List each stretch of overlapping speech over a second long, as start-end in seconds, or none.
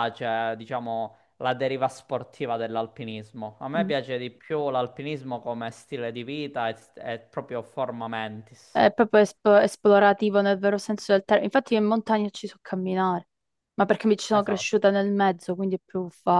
none